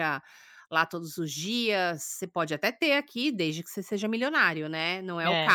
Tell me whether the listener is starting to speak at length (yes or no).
yes